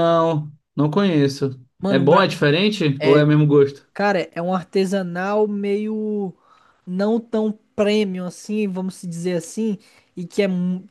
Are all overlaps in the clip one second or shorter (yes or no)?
yes